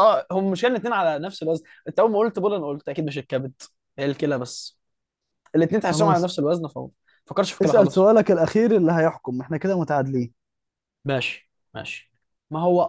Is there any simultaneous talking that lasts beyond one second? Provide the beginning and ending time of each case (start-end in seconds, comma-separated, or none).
none